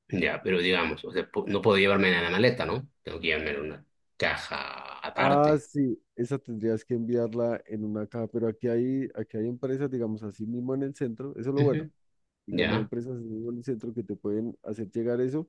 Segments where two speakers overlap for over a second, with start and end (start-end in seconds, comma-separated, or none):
none